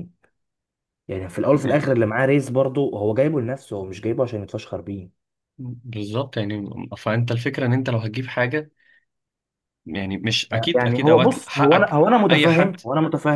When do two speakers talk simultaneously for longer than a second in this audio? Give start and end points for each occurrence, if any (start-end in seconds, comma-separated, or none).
10.7-12.8